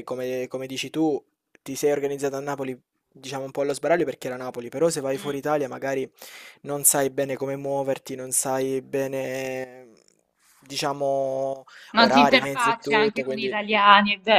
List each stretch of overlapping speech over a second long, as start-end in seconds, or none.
11.9-13.6